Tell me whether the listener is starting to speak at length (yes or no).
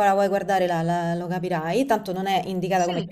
no